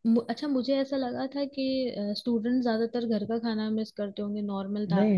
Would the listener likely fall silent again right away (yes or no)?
no